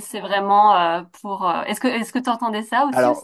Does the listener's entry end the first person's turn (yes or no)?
yes